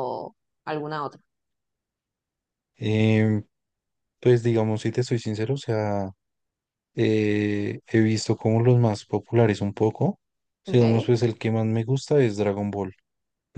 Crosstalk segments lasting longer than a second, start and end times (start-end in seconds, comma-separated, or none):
none